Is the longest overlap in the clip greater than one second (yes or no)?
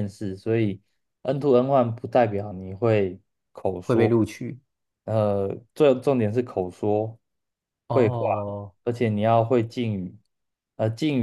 no